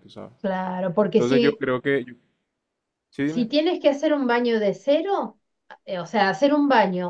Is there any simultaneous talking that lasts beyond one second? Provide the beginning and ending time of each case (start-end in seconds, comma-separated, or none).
none